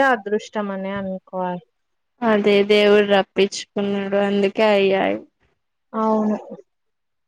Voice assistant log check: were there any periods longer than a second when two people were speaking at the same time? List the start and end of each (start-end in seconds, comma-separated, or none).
none